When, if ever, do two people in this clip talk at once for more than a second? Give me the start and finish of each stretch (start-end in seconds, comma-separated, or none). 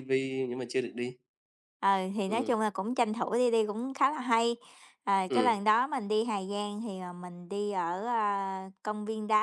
none